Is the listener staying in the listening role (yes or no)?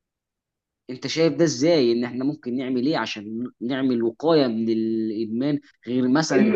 no